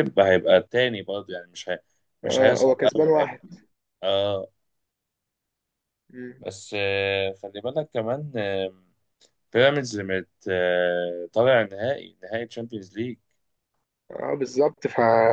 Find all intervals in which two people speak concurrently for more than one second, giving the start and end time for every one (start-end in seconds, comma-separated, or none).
2.2-3.5